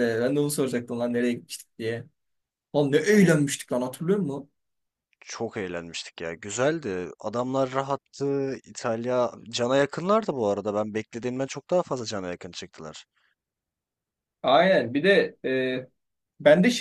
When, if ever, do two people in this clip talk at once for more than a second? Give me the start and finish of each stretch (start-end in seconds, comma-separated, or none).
none